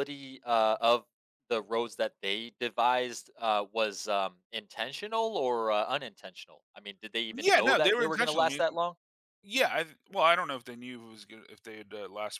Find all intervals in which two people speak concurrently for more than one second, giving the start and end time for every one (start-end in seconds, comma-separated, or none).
7.3-8.6